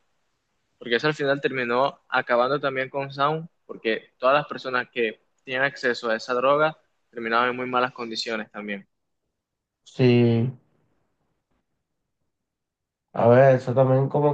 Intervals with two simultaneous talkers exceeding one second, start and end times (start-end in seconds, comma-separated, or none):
none